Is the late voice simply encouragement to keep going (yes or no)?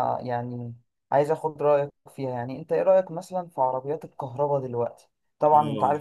yes